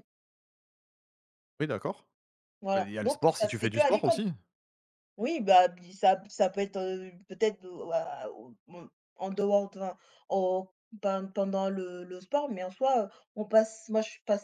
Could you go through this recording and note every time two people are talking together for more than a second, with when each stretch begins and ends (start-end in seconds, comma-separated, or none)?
2.7-4.2